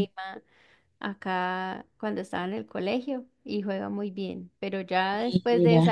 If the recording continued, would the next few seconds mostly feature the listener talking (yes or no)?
no